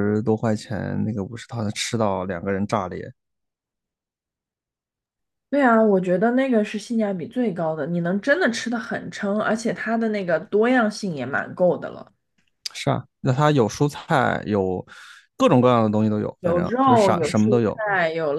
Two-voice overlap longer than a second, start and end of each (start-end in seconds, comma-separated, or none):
16.4-17.8